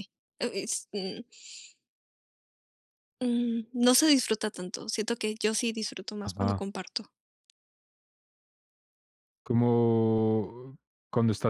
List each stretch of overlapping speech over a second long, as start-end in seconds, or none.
none